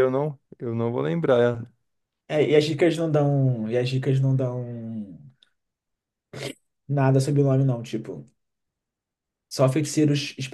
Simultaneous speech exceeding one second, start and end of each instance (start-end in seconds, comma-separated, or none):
none